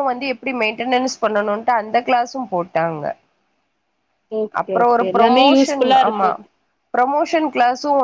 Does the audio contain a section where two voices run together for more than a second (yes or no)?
yes